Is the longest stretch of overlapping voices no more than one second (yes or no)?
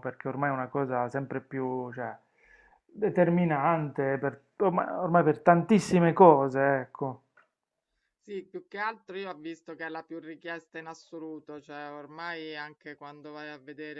yes